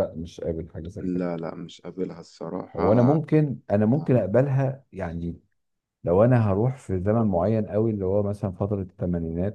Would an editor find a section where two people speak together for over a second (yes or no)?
no